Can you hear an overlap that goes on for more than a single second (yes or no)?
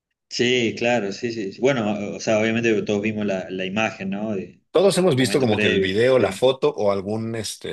yes